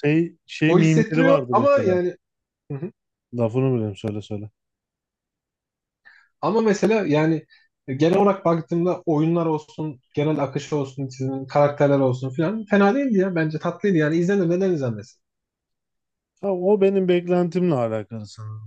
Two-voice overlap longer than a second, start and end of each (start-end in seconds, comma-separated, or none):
0.7-2.0